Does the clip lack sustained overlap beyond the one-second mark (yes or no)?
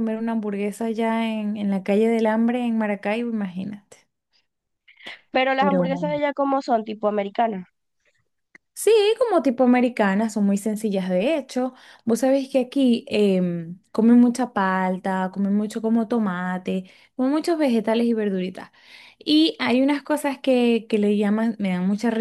yes